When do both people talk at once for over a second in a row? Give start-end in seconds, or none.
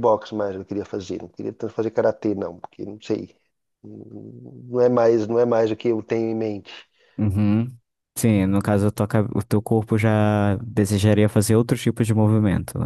none